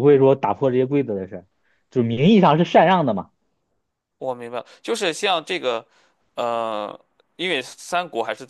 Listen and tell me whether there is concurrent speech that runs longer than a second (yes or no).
no